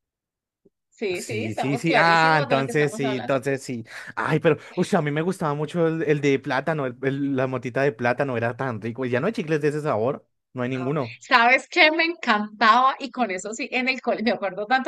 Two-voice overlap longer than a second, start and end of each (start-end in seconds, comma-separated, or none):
1.1-3.3